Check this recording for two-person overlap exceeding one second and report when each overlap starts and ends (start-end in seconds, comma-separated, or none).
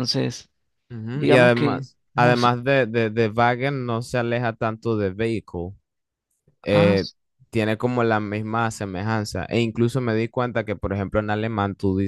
1.1-2.5